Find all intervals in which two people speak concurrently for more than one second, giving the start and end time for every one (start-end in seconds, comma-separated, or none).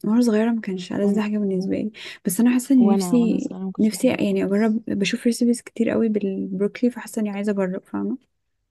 2.8-4.8